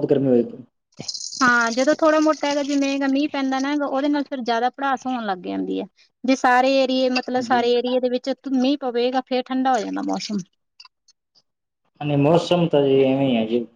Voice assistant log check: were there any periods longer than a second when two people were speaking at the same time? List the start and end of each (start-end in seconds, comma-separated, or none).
none